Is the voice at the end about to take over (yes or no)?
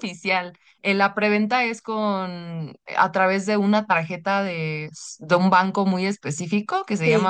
no